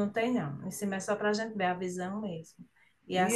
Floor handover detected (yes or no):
no